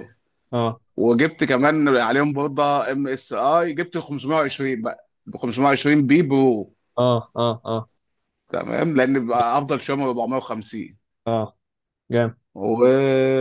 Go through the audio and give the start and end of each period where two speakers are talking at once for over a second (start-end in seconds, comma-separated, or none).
none